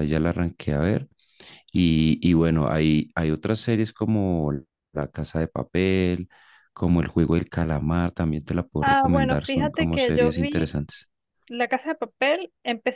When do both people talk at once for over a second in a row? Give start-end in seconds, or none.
8.8-10.7